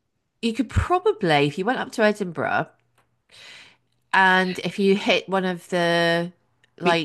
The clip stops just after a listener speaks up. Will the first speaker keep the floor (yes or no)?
no